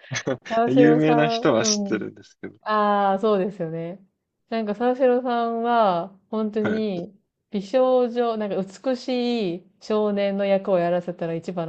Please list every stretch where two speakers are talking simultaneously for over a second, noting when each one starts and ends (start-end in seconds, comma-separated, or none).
0.6-2.0